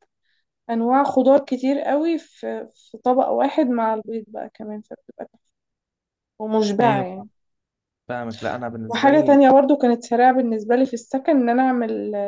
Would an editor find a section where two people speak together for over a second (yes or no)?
no